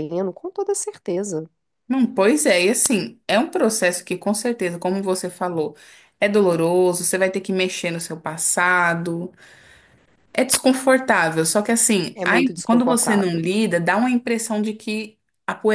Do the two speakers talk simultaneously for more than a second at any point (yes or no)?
yes